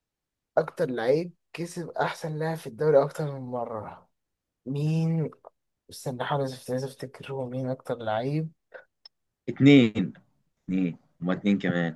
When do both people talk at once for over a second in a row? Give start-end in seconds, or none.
none